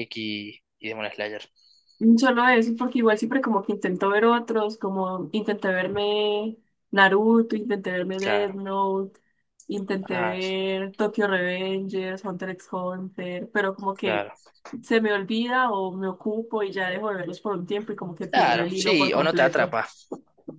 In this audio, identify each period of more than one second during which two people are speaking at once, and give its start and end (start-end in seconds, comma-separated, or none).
18.3-19.8